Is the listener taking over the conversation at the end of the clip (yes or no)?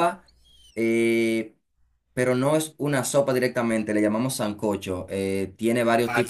no